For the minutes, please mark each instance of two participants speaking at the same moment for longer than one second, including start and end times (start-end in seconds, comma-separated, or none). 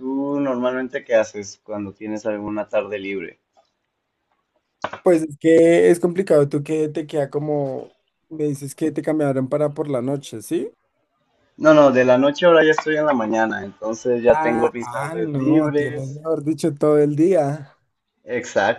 14.3-16.2